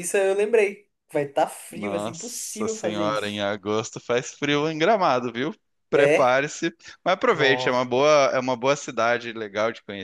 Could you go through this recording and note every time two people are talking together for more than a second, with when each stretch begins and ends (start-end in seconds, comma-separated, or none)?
1.7-3.4